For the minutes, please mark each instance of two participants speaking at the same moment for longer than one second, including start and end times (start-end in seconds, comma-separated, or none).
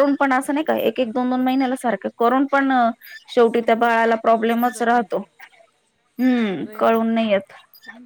3.6-5.2